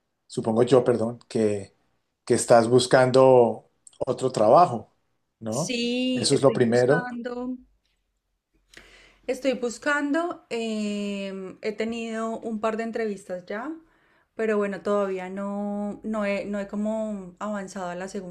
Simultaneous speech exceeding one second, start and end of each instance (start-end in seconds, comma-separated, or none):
5.5-7.0